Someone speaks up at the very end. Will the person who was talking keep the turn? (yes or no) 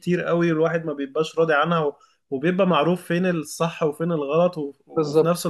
yes